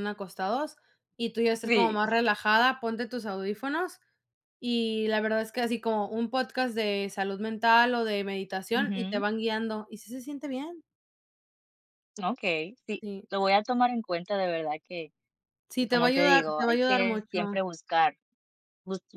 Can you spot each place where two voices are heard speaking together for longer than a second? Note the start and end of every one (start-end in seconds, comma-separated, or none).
15.8-17.6